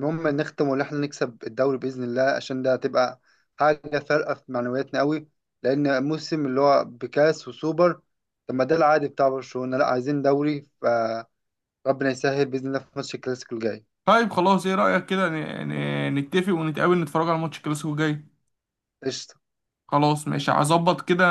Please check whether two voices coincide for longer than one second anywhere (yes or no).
no